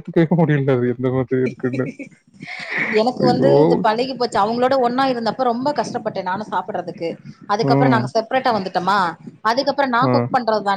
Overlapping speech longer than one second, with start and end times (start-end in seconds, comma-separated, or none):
none